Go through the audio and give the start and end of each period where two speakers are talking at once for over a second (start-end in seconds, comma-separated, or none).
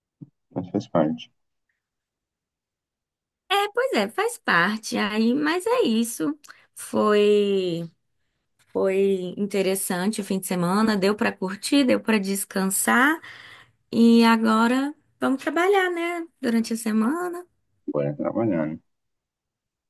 none